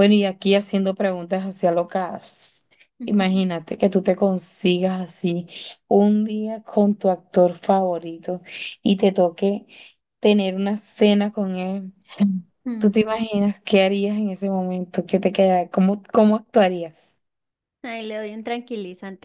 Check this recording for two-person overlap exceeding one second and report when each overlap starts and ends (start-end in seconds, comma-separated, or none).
none